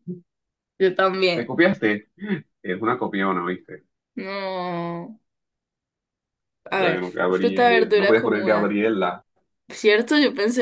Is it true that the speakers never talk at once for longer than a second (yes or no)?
no